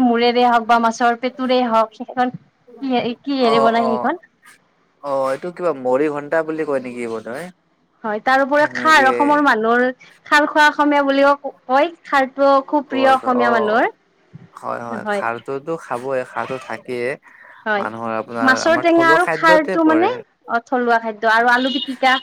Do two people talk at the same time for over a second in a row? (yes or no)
yes